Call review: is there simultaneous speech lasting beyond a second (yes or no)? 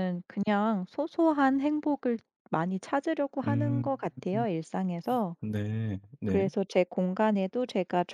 no